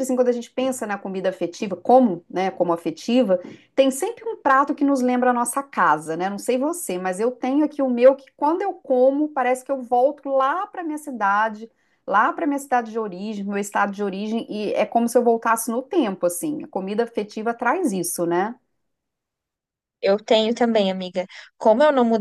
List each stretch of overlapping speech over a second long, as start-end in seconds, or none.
none